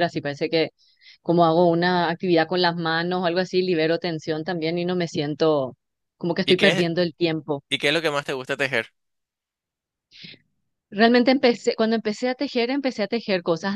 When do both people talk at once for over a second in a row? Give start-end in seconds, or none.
none